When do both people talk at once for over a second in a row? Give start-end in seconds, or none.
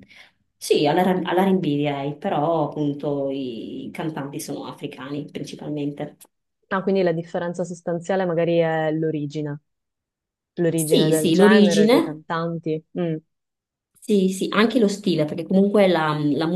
10.8-12.2